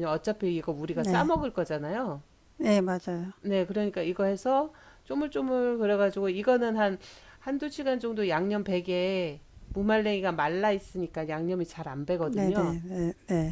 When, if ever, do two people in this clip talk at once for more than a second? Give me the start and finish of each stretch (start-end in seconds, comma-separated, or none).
none